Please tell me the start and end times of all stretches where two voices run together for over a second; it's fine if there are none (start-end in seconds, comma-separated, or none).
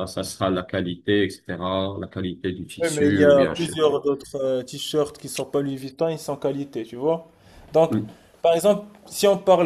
2.8-4.0